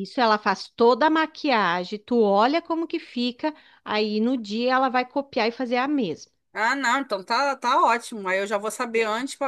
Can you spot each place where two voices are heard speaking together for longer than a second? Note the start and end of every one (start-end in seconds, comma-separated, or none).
none